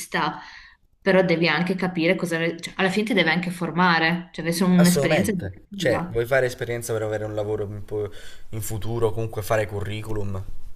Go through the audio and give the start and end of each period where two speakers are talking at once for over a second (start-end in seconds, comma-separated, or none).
4.7-6.2